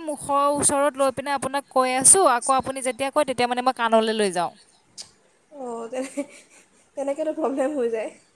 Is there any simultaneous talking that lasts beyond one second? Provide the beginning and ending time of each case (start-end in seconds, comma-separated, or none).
none